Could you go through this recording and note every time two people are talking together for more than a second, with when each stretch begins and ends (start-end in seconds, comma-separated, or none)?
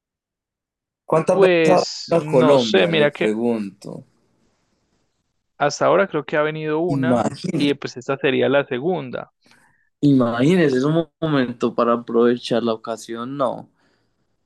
1.3-3.3